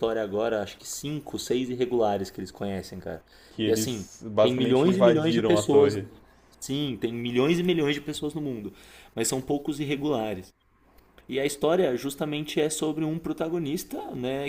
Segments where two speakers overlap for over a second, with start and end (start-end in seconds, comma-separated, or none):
3.6-6.0